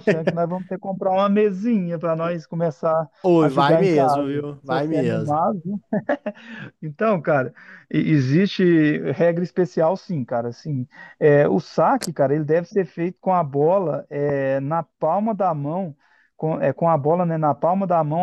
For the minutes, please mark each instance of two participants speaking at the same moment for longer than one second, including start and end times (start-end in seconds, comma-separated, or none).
3.2-5.3